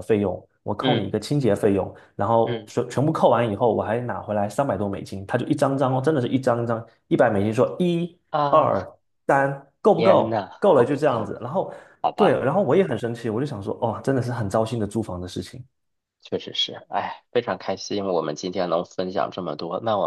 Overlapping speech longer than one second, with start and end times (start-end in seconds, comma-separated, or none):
9.9-11.3